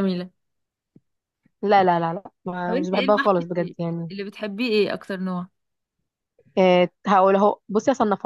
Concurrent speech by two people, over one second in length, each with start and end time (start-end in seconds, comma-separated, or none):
2.7-4.1